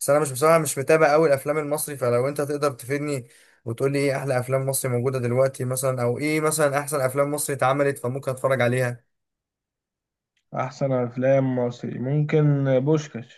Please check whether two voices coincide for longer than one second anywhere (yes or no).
no